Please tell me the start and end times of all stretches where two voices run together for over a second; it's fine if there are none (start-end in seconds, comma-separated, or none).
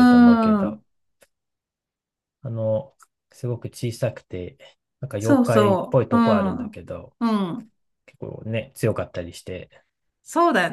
5.2-6.7